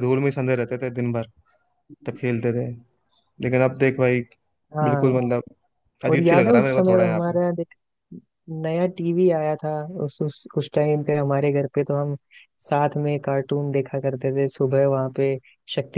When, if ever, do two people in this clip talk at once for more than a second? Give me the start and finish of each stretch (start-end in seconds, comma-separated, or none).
6.1-7.4